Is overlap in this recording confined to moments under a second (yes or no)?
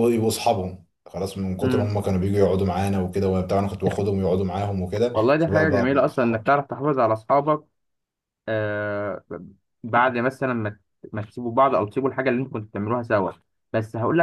no